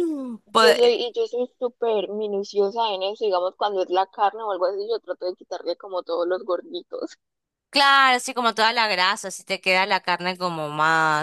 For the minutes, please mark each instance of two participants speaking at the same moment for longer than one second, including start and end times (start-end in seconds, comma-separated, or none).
none